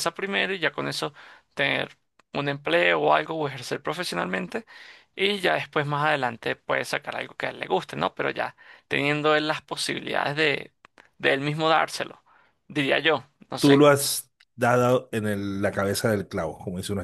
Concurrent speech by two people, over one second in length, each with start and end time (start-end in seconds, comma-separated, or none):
none